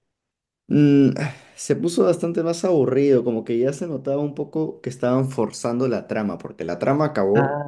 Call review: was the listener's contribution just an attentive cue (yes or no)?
yes